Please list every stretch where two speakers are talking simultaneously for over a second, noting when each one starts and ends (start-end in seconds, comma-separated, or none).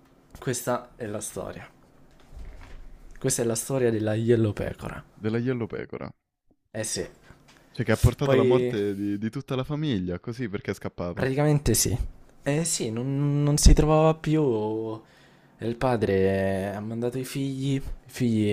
none